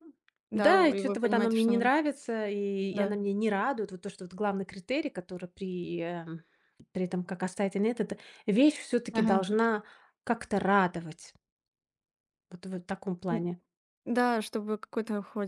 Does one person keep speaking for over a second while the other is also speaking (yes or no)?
yes